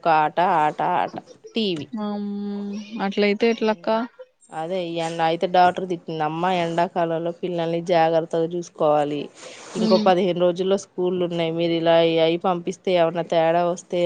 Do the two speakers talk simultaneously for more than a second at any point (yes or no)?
no